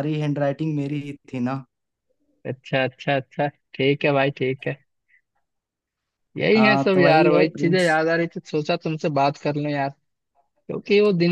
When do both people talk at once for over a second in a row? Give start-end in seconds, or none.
6.5-8.0